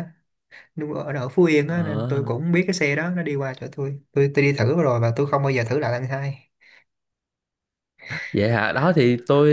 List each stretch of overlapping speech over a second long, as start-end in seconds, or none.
none